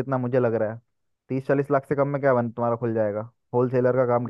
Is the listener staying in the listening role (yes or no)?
no